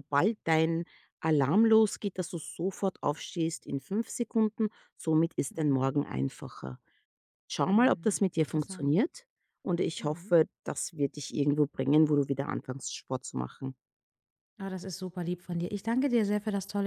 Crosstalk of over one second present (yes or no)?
yes